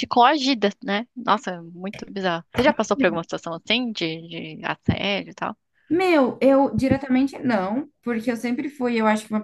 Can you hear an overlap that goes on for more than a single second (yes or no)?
no